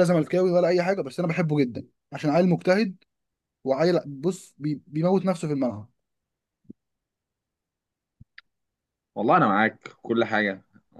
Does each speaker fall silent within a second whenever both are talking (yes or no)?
yes